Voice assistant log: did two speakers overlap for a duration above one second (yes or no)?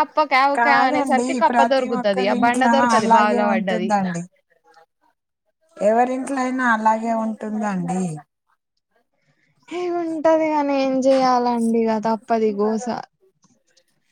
yes